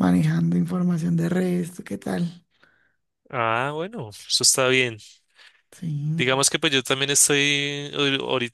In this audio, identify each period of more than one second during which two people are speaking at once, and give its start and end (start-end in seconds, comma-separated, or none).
none